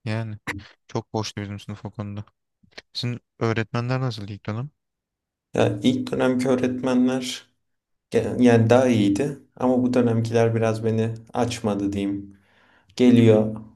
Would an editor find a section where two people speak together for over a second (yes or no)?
no